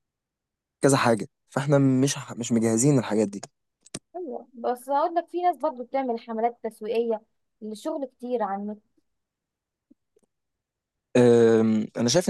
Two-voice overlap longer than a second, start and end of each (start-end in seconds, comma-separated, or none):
none